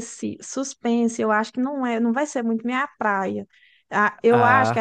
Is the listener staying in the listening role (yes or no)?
yes